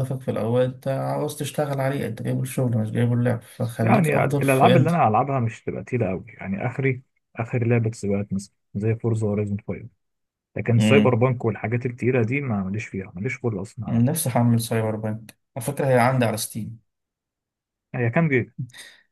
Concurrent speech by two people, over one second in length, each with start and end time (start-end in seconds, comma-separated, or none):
3.8-5.0